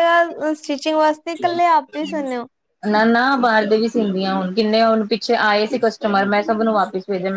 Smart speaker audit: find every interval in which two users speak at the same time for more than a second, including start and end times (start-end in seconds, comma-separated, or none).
none